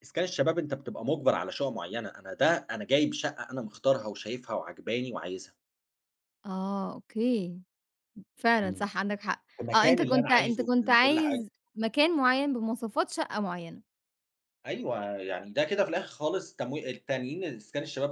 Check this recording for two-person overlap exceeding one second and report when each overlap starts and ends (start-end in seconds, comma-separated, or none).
9.6-11.4